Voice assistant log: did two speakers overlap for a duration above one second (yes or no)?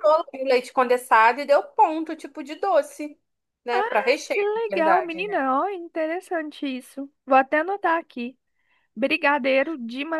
yes